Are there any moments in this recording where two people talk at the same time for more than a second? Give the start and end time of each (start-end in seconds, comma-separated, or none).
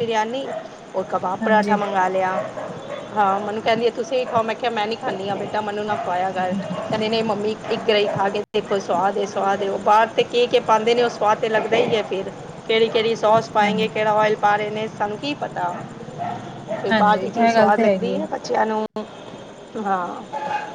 16.9-18.1